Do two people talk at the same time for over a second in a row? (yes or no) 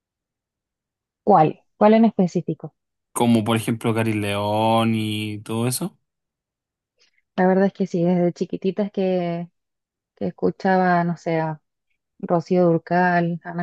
no